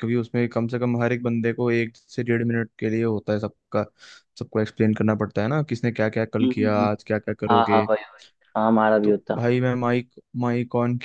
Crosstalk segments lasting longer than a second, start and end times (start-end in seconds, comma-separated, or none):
none